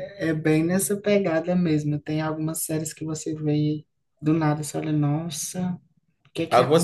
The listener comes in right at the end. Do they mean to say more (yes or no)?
yes